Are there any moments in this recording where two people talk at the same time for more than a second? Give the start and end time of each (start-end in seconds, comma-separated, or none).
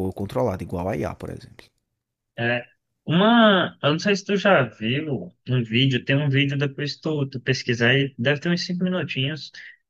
none